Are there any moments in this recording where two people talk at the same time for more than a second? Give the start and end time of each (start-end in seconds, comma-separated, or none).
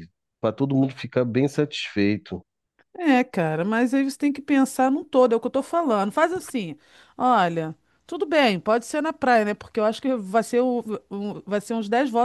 none